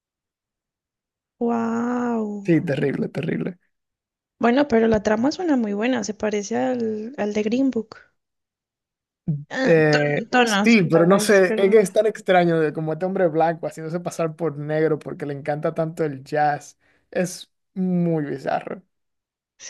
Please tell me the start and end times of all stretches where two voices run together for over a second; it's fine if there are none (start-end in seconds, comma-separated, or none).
9.6-11.6